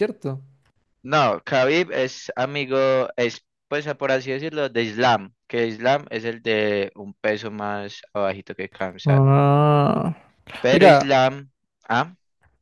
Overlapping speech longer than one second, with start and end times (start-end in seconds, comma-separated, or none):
none